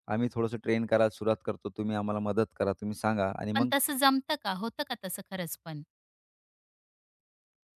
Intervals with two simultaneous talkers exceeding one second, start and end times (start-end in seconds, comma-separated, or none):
none